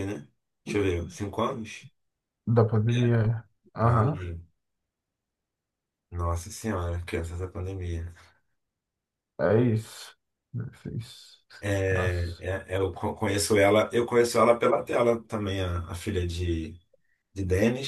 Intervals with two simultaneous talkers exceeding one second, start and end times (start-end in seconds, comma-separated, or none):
none